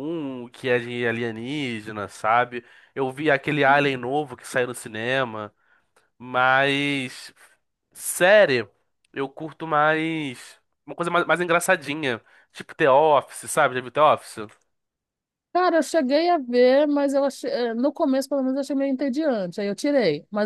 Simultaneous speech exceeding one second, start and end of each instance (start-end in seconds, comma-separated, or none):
none